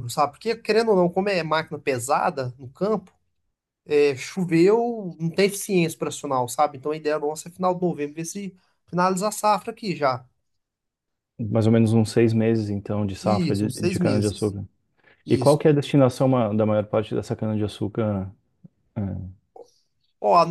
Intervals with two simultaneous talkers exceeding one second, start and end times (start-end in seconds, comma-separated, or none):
13.2-14.5